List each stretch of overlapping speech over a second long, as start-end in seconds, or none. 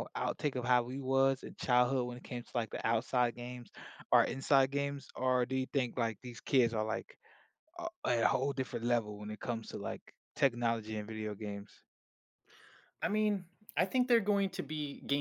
none